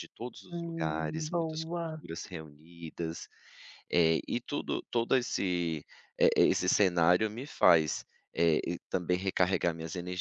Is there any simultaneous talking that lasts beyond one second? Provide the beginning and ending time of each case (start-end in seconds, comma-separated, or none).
0.5-2.0